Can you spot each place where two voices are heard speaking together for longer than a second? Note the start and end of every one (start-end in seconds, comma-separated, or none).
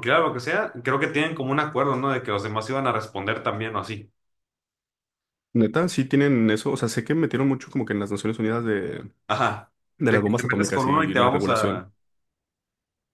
10.0-11.9